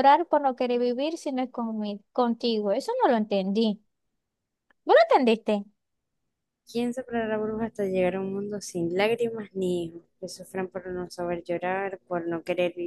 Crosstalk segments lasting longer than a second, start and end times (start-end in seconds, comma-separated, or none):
none